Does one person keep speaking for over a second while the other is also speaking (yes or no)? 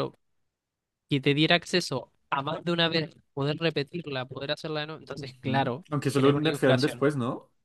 yes